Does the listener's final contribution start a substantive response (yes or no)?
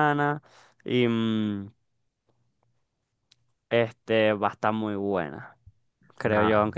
no